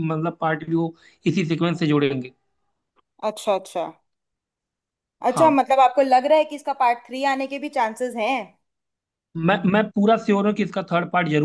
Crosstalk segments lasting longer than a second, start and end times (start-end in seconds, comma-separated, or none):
none